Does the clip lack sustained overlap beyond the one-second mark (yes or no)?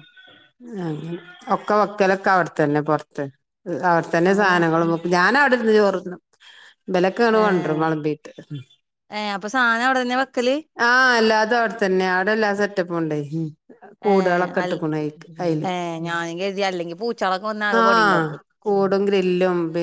yes